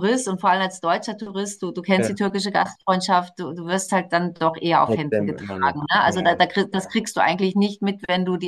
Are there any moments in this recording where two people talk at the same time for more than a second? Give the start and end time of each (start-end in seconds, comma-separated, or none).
4.8-6.4